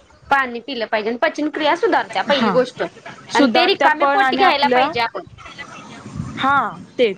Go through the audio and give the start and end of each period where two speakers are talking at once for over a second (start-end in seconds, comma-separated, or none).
3.4-4.9